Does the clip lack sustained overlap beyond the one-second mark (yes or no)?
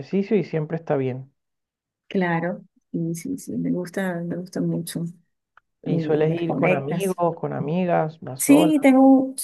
no